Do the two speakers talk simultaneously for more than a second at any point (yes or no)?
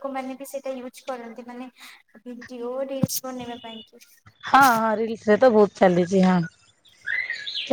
no